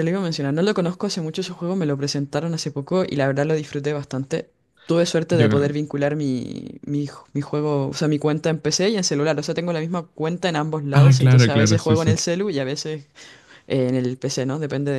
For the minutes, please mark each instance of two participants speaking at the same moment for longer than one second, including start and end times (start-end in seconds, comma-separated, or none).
10.9-12.2